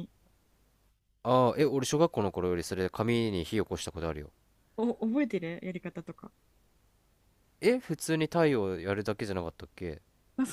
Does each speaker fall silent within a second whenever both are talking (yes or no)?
yes